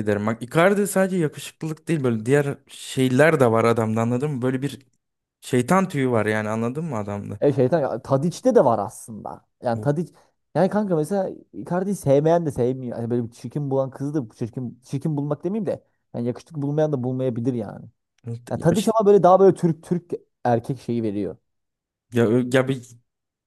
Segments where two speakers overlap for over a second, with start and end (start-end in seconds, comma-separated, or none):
none